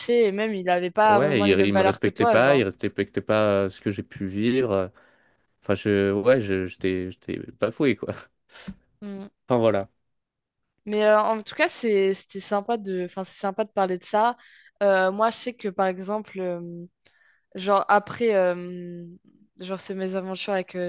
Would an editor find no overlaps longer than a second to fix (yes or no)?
no